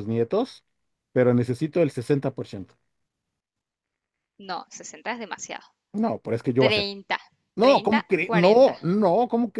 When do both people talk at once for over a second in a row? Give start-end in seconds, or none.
7.6-8.8